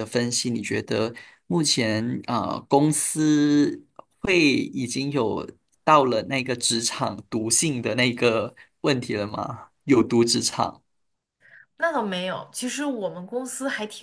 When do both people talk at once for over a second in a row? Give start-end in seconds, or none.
none